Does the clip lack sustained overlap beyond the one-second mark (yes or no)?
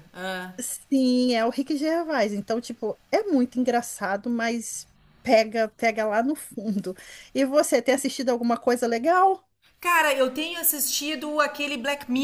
yes